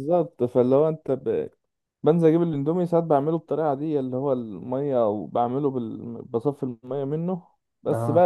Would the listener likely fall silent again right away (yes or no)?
yes